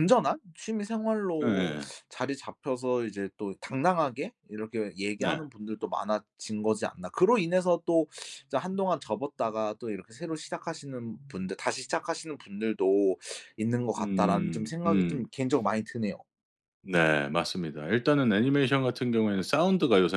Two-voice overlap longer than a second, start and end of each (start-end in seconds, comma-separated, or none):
13.9-15.3